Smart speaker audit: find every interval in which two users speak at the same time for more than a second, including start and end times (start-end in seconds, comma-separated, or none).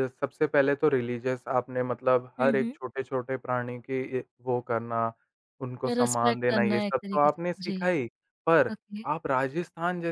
5.9-7.9